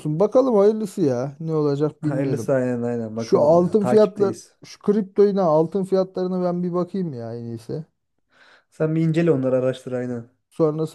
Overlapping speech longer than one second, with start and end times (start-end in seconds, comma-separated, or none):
3.2-4.6